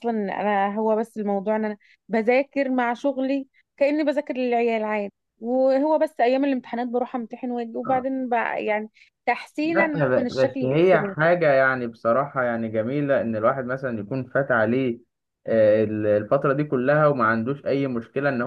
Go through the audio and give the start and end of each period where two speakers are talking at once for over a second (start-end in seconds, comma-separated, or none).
9.6-11.1